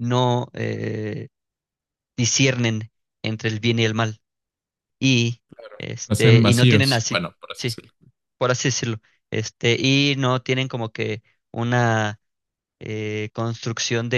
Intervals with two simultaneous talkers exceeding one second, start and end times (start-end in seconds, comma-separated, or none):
6.1-7.8